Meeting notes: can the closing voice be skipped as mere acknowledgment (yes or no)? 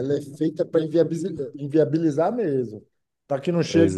yes